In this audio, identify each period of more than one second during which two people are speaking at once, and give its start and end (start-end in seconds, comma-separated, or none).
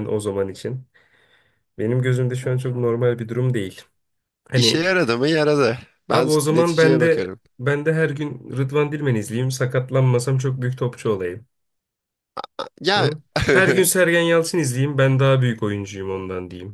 6.1-7.4